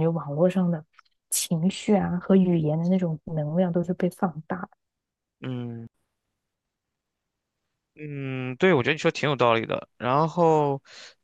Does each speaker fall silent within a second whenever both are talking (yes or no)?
yes